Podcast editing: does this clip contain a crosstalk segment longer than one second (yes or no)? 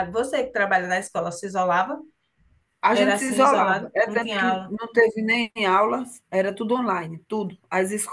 yes